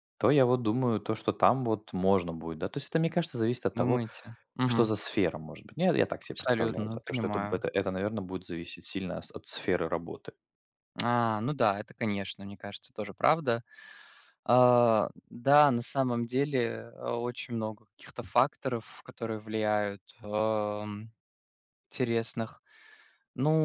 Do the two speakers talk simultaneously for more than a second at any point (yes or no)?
yes